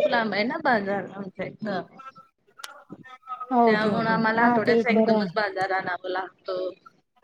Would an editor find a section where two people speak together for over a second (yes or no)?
yes